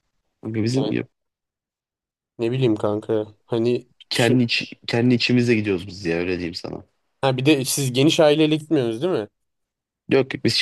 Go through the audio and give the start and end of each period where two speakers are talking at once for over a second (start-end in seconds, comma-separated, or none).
none